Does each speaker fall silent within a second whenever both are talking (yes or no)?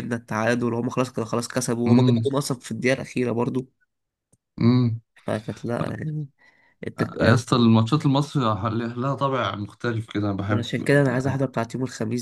yes